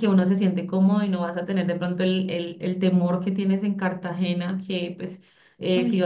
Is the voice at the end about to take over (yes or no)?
no